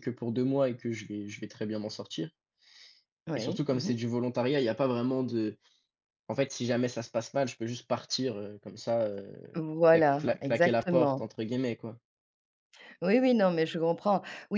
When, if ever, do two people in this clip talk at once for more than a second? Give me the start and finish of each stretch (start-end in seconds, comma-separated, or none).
9.5-11.3